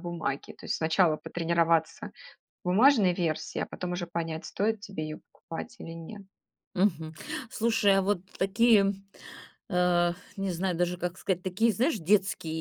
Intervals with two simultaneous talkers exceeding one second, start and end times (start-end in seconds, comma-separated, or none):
none